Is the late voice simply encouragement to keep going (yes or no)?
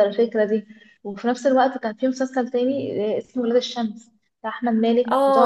no